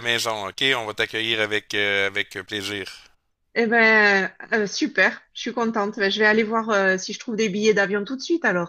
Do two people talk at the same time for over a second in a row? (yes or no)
no